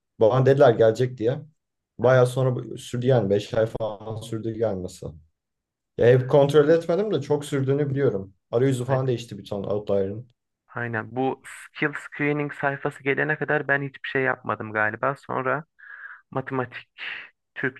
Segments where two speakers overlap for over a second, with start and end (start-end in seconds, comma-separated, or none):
none